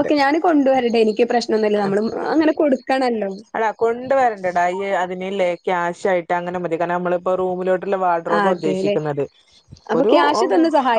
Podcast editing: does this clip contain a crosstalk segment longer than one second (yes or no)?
no